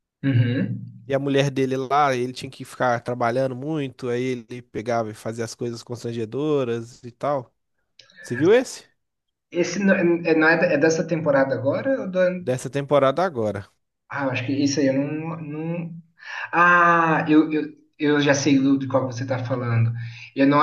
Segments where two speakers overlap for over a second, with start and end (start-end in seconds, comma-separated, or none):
none